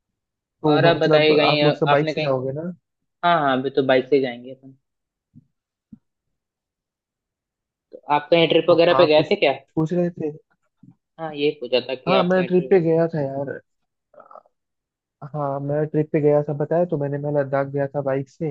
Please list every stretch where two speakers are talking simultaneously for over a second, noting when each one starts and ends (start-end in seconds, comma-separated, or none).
0.7-2.3